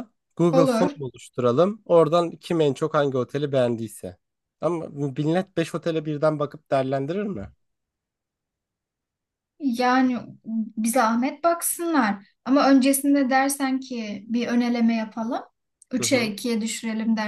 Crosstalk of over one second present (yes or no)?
no